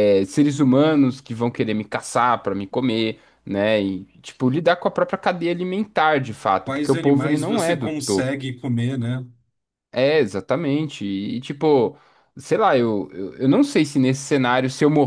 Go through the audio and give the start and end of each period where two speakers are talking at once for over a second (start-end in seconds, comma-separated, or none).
6.6-8.3